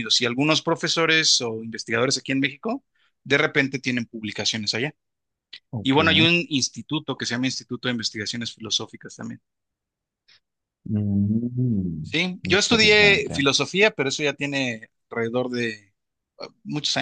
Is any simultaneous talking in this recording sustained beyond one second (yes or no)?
yes